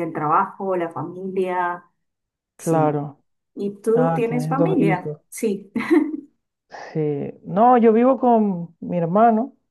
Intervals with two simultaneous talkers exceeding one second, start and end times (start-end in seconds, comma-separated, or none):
3.9-5.2